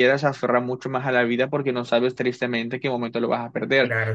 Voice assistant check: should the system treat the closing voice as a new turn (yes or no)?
yes